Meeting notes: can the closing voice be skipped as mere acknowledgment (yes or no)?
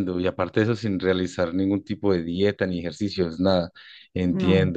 yes